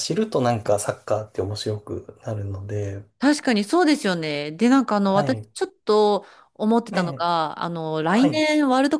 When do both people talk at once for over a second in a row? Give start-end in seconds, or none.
none